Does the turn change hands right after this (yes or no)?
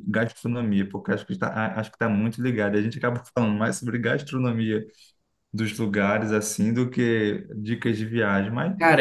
yes